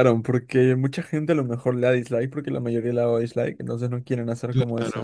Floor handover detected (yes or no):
yes